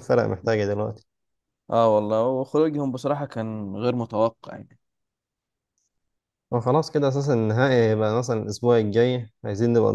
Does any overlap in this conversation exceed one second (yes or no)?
no